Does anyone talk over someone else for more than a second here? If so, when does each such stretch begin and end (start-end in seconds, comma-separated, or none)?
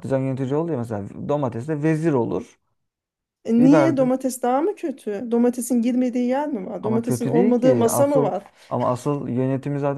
6.8-8.4